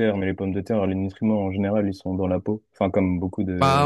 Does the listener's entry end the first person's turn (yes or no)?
yes